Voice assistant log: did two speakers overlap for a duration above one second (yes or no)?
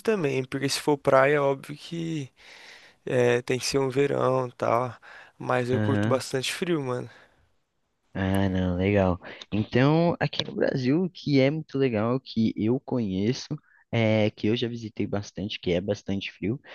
no